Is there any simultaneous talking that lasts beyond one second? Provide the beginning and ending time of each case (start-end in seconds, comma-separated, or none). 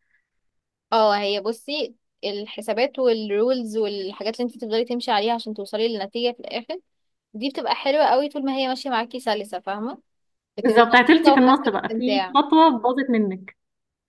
10.6-12.3